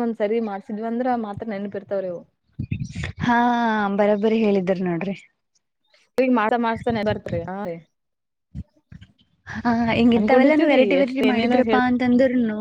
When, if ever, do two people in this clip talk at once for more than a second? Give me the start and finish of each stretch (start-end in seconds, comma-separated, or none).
10.2-11.6